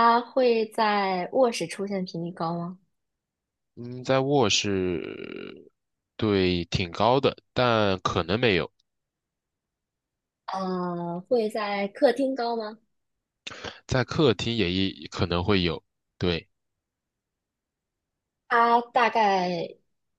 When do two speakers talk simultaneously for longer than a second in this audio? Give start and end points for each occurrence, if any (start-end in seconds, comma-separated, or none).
none